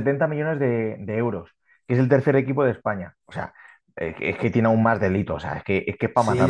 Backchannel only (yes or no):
no